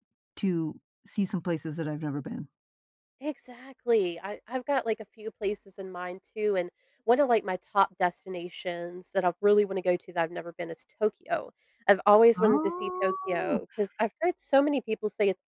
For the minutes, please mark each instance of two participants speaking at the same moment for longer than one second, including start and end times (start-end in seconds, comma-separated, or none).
12.4-13.6